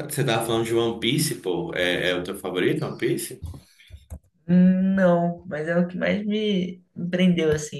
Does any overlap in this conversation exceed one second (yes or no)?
no